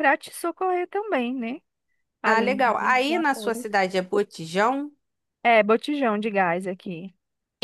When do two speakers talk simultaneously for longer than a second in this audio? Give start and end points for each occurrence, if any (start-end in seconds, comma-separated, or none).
2.2-3.7